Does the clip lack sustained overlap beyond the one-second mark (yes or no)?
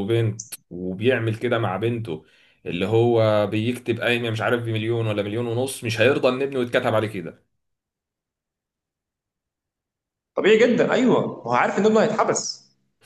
yes